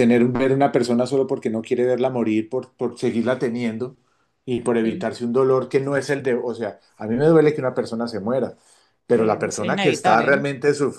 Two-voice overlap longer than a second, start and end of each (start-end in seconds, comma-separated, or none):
9.1-10.4